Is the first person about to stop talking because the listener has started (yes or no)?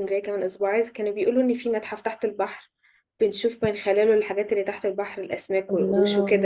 no